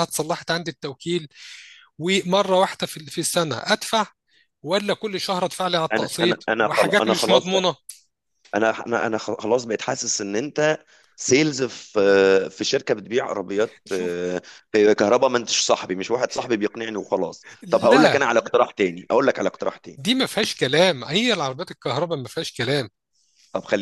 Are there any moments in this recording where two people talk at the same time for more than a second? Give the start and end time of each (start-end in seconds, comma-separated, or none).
5.9-7.7